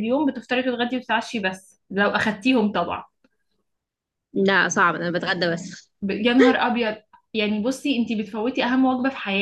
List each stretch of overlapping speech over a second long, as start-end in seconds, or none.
none